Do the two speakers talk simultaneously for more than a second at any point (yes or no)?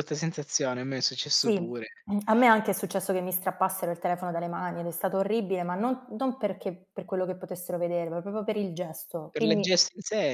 no